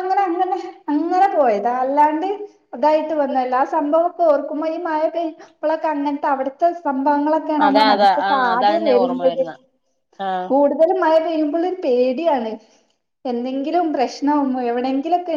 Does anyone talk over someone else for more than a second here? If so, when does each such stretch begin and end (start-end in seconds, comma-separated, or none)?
7.7-9.4